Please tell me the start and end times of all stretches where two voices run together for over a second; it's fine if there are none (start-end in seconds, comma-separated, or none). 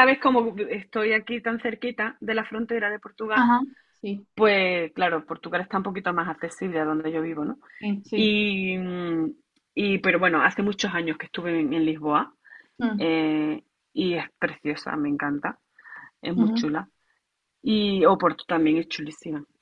none